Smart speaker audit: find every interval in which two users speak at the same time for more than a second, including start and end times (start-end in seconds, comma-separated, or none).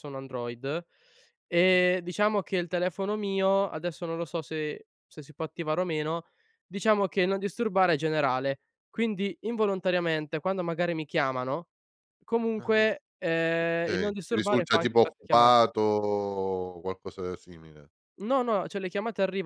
13.7-15.5